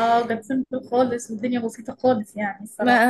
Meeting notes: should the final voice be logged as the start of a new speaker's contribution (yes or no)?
yes